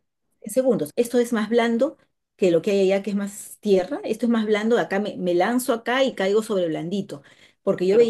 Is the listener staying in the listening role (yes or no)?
yes